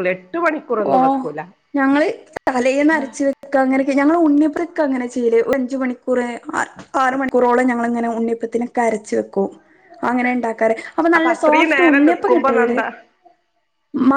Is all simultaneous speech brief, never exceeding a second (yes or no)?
no